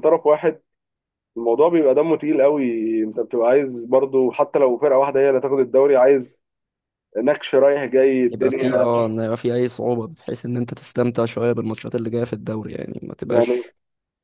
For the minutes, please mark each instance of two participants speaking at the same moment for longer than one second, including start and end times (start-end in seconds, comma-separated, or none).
none